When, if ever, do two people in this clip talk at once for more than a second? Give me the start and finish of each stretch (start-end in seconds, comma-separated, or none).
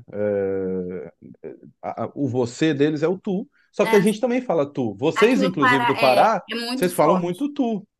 5.1-7.5